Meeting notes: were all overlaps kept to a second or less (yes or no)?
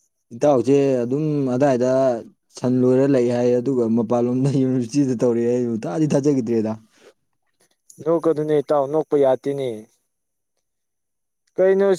yes